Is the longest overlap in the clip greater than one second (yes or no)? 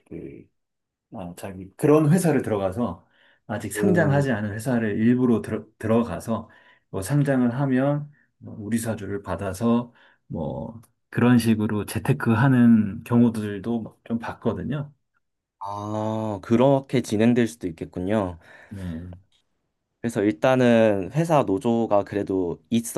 no